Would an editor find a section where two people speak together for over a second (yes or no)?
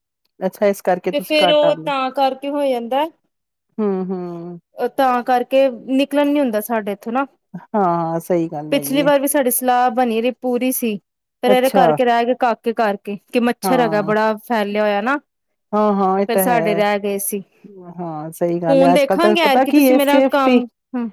yes